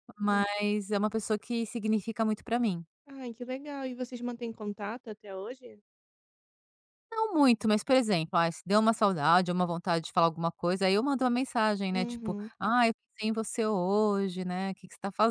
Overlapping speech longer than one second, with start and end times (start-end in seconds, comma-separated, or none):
none